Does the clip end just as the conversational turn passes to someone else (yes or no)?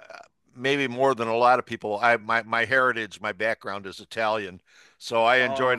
no